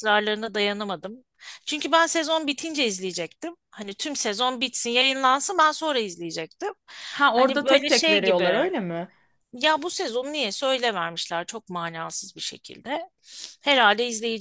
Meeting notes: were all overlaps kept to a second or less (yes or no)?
no